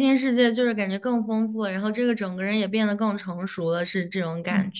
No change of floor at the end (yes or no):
no